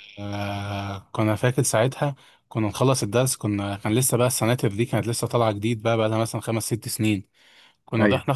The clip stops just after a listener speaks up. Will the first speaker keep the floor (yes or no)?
yes